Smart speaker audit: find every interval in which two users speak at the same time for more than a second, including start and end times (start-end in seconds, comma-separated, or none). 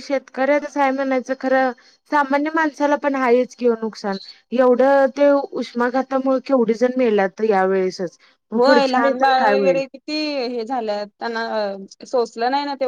none